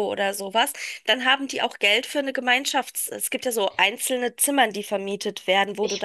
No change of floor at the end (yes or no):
no